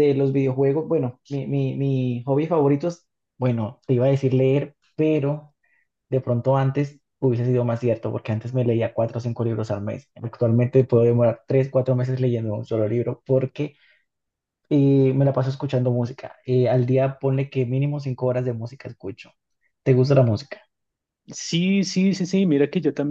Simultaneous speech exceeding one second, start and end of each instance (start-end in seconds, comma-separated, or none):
none